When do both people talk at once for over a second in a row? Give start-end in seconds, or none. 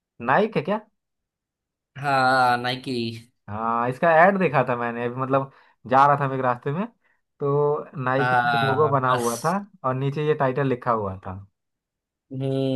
8.2-9.6